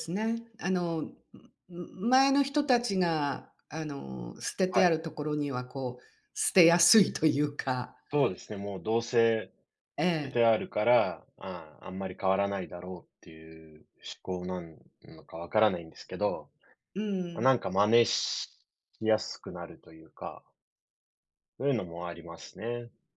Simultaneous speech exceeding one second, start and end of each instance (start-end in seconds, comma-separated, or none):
none